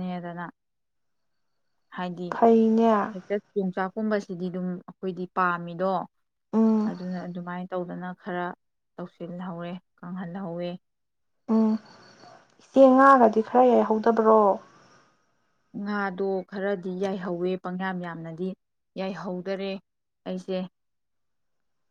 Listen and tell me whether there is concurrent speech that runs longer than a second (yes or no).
no